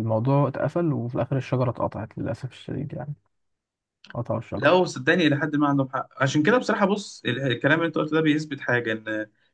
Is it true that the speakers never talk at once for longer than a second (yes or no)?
yes